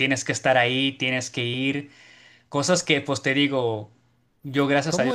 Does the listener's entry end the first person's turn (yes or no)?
yes